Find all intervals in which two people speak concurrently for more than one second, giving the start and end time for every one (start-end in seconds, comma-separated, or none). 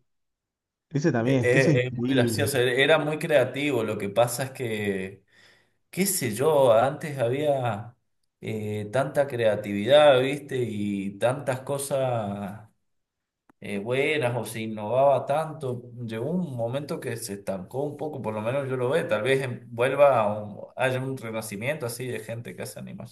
1.2-2.5